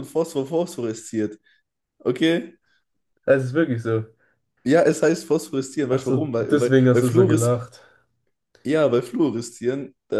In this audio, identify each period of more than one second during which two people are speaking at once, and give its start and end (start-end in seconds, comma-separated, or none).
5.9-7.6